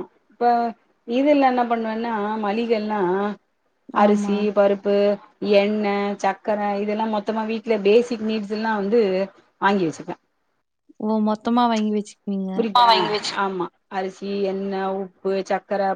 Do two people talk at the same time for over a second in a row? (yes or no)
no